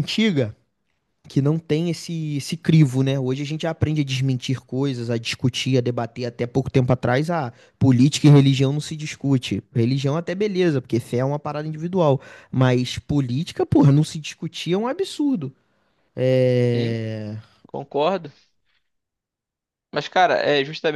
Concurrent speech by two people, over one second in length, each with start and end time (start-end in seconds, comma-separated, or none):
none